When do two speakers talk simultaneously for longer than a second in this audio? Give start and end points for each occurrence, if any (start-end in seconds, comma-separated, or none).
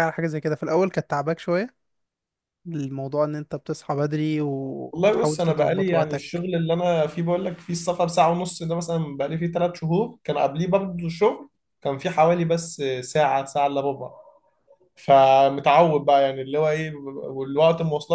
4.9-6.4